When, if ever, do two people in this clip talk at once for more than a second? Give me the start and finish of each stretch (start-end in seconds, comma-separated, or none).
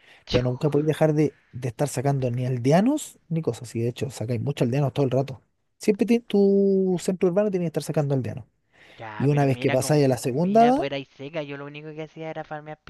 9.2-10.8